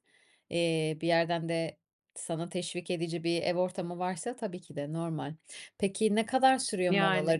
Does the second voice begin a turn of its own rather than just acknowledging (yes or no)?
no